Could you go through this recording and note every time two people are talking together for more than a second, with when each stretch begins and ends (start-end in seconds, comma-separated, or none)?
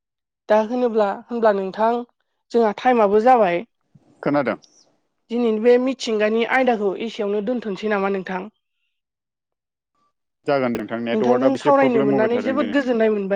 11.2-12.8